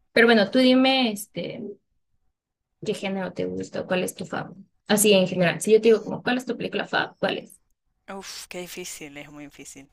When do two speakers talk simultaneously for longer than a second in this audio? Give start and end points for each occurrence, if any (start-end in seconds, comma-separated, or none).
none